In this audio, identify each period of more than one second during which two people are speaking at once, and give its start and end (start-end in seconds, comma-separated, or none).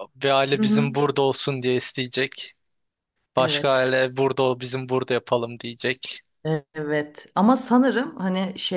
none